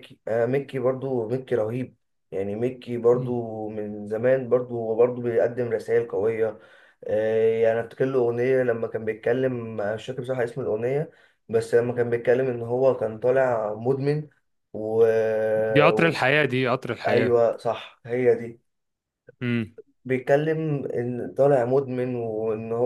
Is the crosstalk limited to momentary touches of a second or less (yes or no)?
yes